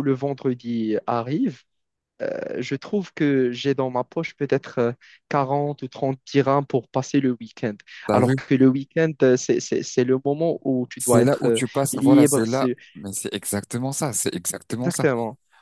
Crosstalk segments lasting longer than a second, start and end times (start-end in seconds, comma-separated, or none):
11.0-12.8